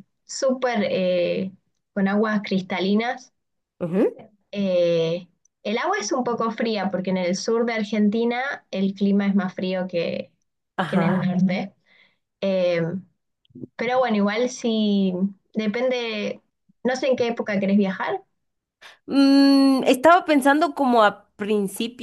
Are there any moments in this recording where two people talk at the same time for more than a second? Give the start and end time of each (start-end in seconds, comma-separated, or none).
none